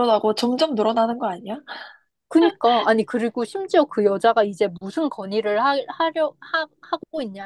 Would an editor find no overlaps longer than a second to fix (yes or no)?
yes